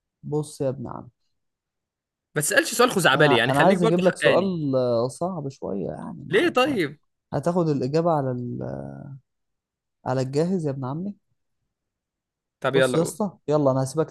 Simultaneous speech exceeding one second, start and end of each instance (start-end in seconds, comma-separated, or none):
3.1-4.5